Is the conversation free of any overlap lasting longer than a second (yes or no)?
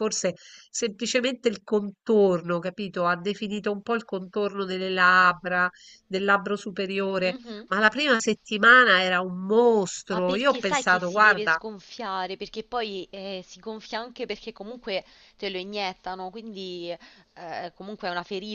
no